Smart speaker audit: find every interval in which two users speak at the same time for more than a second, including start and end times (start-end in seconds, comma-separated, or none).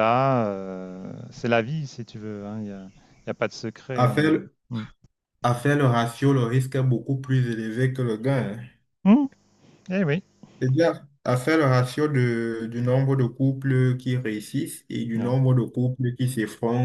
none